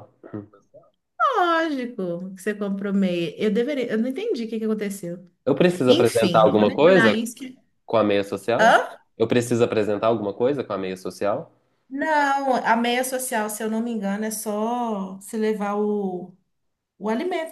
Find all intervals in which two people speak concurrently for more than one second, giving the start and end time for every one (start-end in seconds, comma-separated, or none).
5.9-7.2